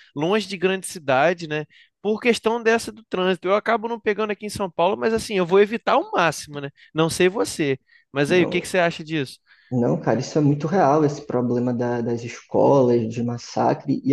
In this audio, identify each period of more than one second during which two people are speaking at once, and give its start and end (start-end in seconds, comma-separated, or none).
none